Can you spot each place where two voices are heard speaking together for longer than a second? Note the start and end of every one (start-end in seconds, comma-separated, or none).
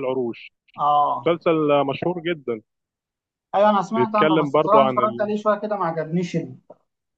4.0-5.3